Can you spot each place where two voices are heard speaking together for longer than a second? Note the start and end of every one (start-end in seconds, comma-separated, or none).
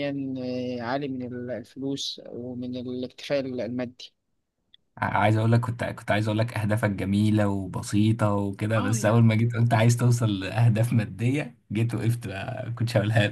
none